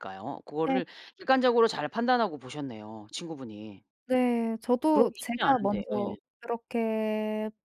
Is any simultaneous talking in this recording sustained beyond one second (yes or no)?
yes